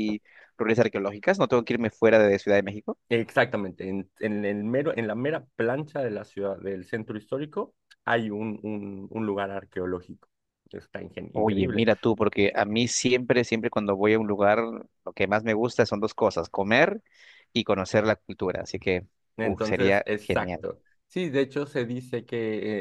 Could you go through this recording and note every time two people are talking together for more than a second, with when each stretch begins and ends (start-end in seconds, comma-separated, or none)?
19.4-20.6